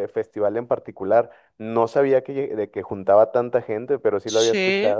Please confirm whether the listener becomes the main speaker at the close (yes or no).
yes